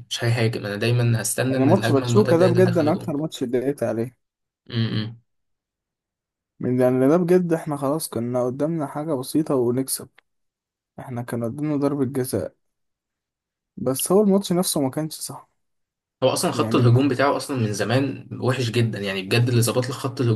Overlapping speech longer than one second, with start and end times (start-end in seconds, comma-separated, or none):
1.5-3.2